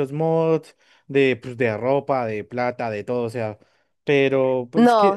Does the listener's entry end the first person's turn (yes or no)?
yes